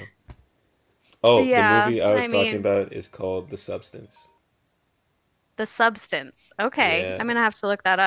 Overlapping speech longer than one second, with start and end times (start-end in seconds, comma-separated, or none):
1.3-2.7